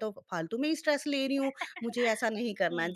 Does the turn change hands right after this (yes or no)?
yes